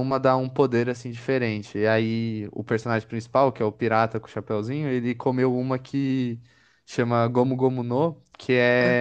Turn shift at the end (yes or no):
no